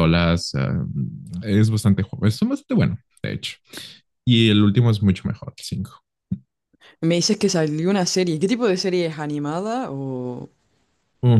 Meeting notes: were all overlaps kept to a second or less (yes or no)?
yes